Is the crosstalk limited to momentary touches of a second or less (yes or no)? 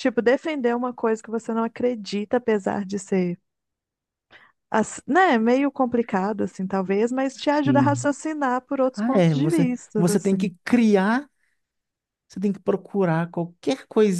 no